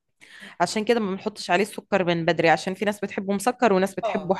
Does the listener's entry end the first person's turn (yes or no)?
yes